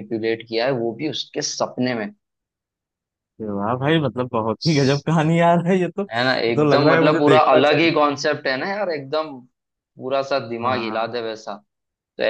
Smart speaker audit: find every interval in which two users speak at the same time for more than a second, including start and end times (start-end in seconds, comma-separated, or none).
6.1-8.0